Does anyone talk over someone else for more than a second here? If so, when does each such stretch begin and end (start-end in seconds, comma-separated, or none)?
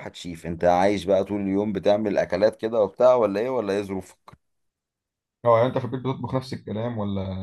none